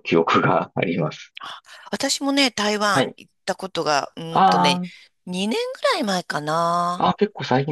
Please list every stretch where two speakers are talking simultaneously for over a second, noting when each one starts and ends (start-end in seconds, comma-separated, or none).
none